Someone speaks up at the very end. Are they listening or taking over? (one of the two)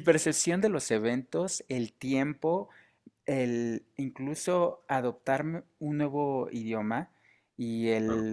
listening